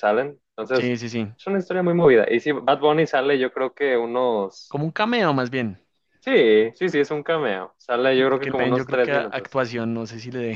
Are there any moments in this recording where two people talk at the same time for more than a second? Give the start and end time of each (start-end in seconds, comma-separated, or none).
8.3-9.6